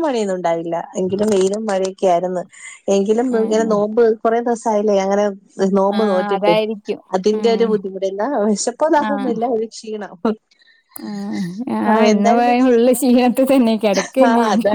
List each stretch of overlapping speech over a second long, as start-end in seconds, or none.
none